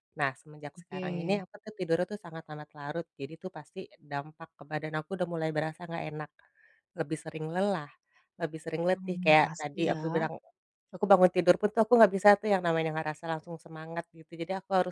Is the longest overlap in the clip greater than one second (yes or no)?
yes